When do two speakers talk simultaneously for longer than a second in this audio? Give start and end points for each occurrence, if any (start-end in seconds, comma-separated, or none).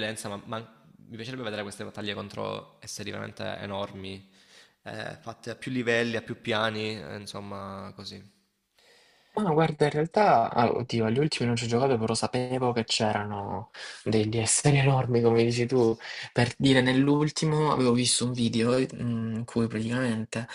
none